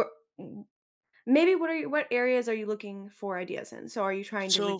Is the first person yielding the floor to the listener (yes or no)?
no